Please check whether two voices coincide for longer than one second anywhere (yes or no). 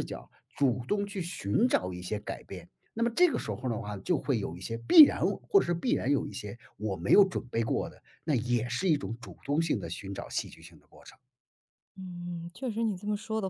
no